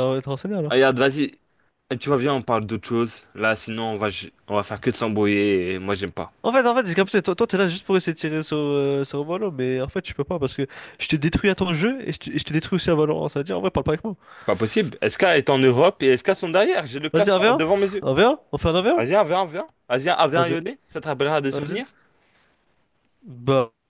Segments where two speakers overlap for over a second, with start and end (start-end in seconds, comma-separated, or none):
none